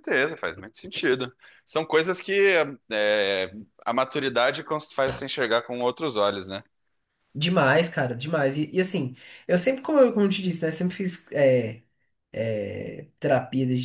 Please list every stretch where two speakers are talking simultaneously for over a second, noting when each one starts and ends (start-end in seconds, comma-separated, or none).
none